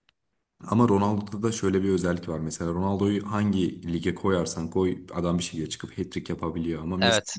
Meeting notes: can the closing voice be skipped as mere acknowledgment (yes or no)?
no